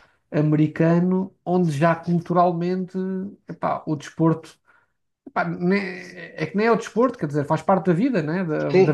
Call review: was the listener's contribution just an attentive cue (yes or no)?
no